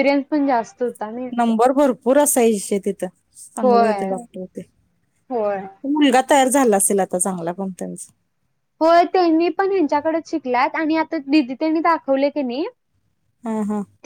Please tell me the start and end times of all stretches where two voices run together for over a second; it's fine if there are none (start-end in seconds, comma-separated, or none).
none